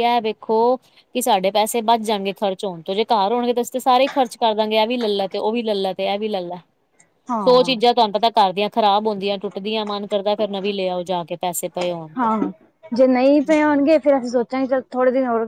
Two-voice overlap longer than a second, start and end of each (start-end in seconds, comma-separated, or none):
none